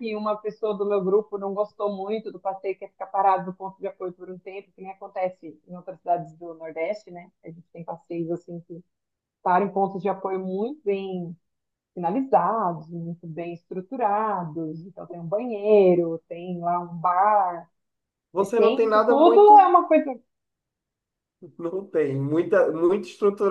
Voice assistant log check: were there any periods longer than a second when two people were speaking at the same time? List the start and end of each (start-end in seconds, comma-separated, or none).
18.4-19.8